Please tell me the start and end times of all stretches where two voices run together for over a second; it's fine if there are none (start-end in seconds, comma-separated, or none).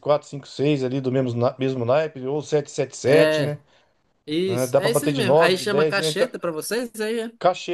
4.5-6.3